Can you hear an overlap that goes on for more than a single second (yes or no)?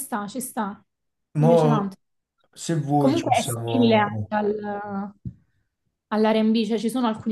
yes